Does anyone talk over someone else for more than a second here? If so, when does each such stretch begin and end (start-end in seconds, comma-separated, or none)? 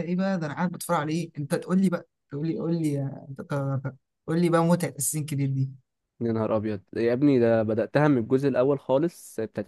none